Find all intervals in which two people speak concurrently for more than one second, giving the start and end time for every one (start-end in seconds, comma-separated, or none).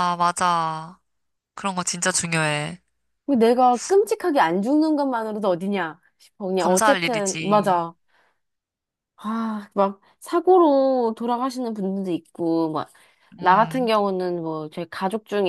6.6-7.8